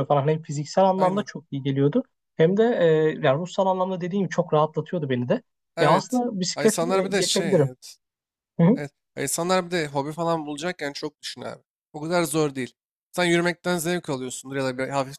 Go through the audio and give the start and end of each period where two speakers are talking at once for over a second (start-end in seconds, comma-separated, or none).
5.8-7.7